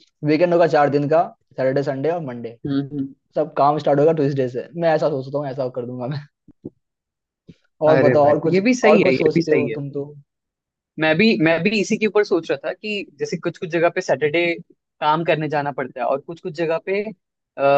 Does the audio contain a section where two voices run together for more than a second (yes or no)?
yes